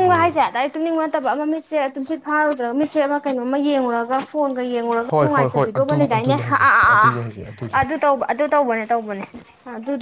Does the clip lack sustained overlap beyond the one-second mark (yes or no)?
no